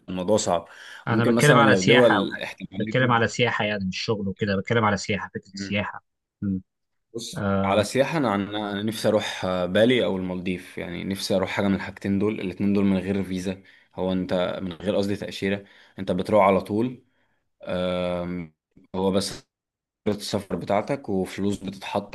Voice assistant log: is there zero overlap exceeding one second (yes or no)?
no